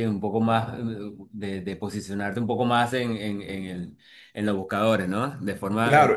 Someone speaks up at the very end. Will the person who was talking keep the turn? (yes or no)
no